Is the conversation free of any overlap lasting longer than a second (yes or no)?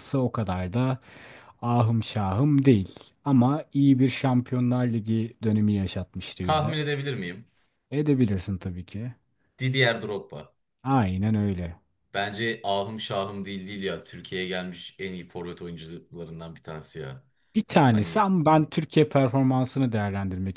yes